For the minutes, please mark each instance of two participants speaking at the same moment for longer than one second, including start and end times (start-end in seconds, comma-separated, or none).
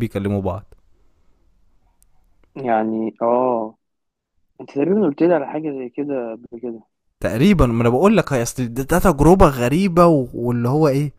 none